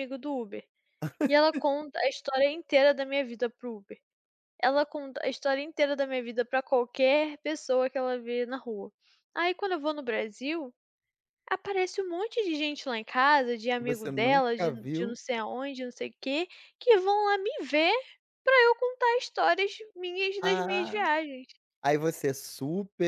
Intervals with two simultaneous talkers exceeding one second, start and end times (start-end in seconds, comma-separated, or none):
13.8-15.1